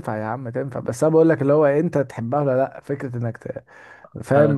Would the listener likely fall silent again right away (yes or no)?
yes